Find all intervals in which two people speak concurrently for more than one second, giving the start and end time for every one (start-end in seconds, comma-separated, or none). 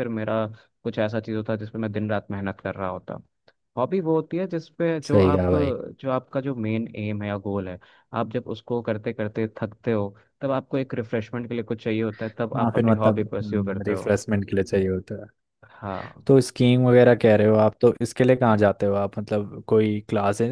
12.6-14.1